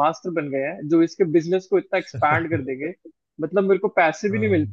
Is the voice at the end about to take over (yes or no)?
no